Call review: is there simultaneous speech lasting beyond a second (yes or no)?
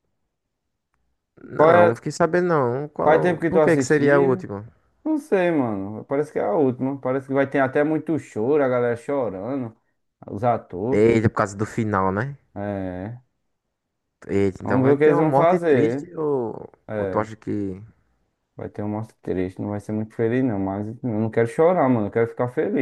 yes